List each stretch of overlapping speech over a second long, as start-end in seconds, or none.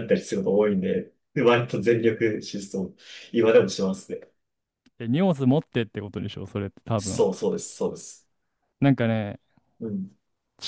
none